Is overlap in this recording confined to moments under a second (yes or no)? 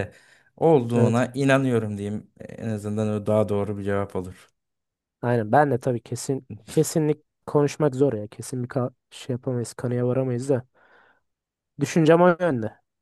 yes